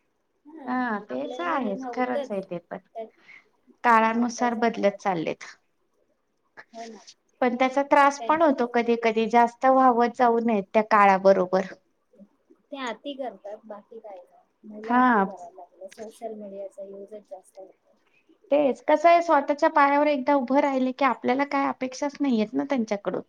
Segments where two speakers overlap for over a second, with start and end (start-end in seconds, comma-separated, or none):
1.1-2.4